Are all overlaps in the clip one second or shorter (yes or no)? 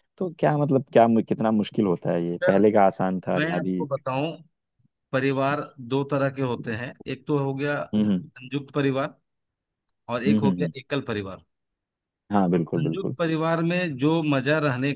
yes